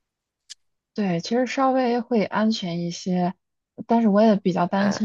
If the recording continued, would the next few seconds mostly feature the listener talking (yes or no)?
no